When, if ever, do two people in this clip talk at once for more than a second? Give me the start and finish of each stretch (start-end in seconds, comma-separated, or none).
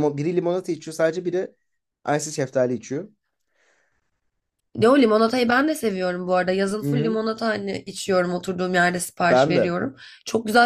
none